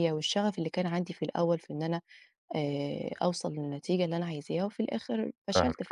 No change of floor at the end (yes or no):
yes